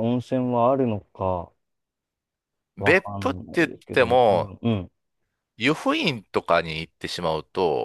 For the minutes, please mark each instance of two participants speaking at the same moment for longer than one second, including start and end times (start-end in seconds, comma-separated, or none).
2.8-4.5